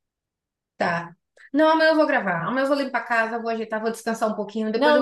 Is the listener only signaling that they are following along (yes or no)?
no